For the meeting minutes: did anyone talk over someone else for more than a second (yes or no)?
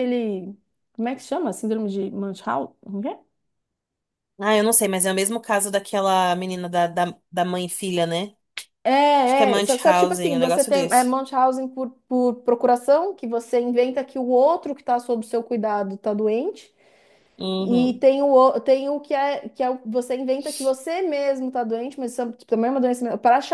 yes